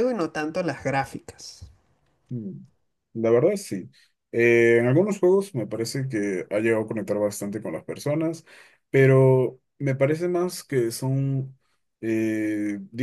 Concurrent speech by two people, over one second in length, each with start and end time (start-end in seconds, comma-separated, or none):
none